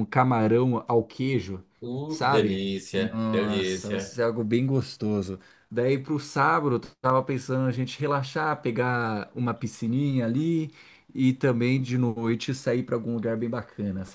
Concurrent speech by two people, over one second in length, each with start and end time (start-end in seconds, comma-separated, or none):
2.1-4.2